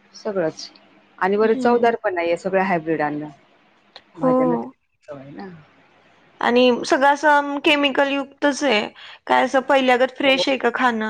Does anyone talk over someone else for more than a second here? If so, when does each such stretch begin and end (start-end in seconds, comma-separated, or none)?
none